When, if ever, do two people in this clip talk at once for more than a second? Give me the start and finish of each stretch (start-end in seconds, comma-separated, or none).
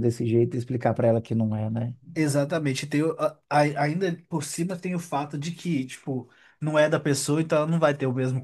none